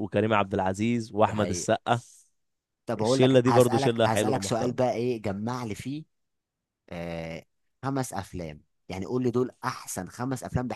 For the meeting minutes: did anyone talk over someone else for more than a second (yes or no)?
yes